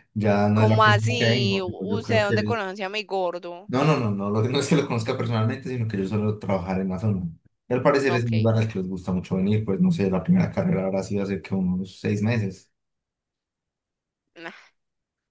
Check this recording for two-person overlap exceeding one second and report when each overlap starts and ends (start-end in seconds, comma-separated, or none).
0.5-2.6